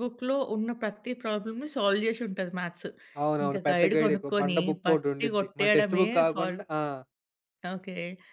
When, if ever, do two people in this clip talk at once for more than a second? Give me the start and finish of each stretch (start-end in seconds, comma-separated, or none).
3.4-6.5